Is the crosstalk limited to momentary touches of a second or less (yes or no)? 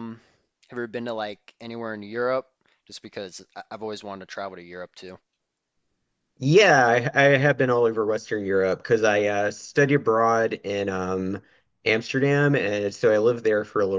yes